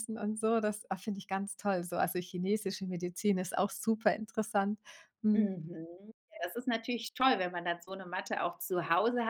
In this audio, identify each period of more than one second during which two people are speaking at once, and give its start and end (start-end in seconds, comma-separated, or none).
none